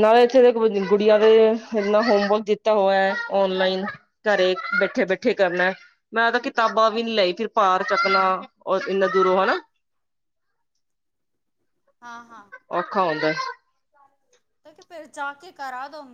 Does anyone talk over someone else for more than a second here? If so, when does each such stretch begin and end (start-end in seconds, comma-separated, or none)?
none